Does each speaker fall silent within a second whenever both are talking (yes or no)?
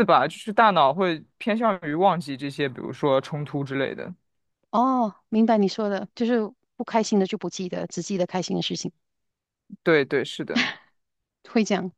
yes